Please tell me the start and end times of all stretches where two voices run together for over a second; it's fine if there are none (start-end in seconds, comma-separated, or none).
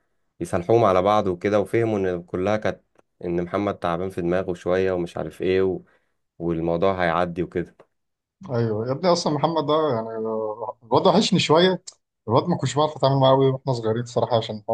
none